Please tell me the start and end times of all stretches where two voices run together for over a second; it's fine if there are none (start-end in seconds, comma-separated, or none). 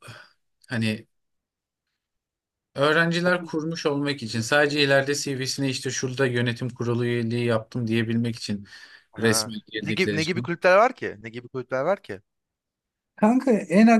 9.2-10.5